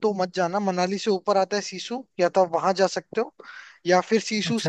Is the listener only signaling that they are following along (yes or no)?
yes